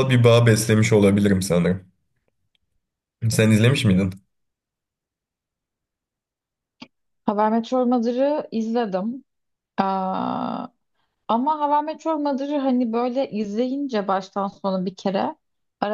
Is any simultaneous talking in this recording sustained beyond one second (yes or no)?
no